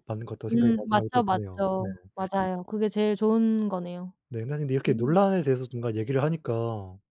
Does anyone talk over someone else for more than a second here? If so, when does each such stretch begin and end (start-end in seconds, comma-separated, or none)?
0.5-1.9